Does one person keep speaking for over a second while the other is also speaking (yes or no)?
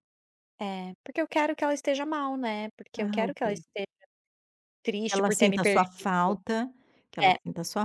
yes